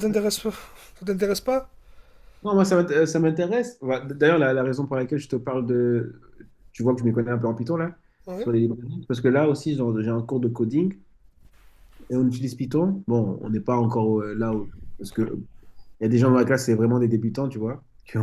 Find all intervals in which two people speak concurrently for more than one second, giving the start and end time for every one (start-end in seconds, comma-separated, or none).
none